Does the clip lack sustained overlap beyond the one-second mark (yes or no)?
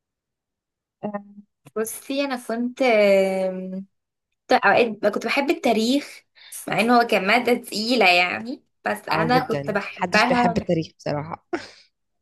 no